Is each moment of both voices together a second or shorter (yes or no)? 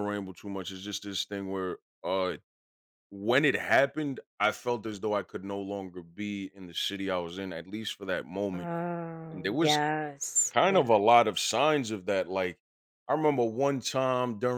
yes